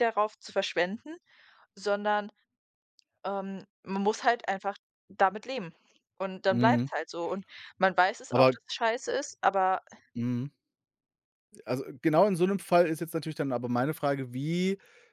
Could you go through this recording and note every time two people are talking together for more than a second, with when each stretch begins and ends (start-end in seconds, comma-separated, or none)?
none